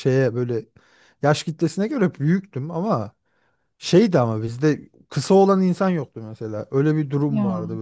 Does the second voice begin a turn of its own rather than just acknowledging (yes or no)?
no